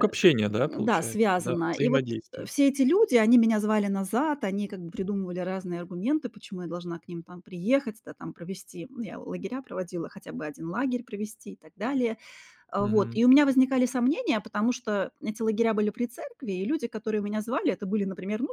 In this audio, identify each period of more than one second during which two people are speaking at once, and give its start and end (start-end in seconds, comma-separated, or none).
0.6-2.5